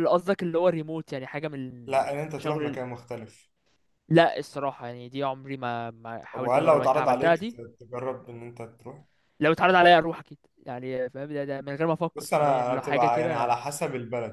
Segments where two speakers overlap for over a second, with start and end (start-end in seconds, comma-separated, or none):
6.3-7.6, 12.2-13.6